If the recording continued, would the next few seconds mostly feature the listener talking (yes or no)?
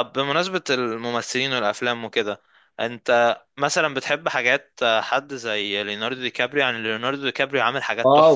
yes